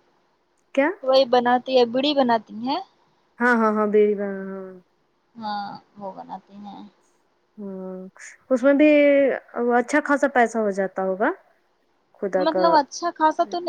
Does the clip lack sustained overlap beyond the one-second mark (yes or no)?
yes